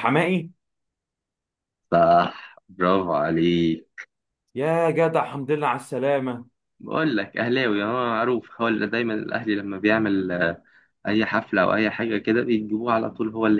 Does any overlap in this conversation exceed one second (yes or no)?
no